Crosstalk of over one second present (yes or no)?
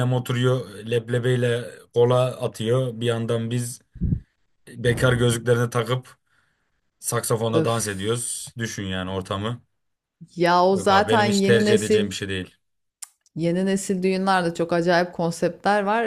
yes